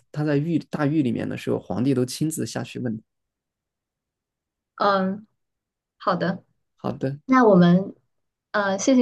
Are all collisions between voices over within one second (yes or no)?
yes